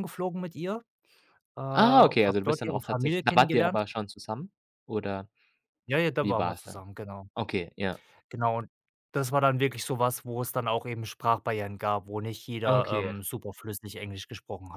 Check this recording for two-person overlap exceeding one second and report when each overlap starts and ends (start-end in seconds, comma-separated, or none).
1.8-3.8